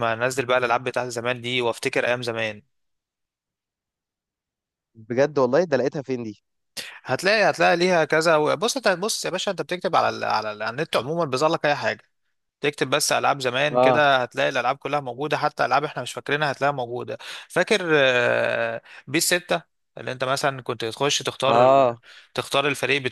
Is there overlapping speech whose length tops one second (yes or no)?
no